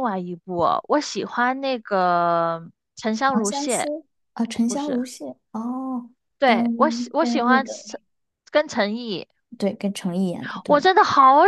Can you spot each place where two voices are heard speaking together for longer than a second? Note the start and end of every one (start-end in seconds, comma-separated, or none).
6.4-7.8